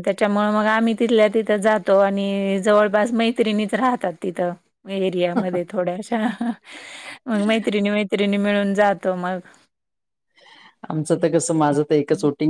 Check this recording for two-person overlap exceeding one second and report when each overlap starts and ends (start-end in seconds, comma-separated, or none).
none